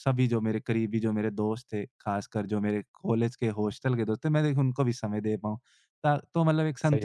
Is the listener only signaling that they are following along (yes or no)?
yes